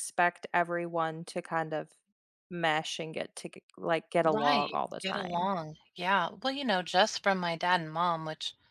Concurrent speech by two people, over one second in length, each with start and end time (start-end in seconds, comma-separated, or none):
4.2-5.5